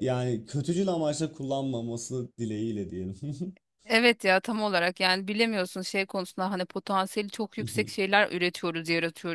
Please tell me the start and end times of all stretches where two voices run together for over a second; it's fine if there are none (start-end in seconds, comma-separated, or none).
none